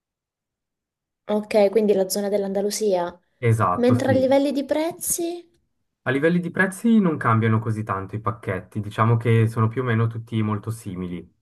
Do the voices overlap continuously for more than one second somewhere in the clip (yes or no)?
no